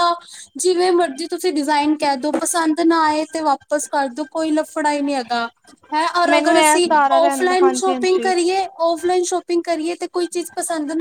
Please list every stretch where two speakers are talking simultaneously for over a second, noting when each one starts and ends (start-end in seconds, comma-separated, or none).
6.3-8.3